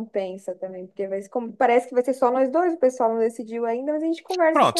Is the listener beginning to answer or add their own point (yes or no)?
yes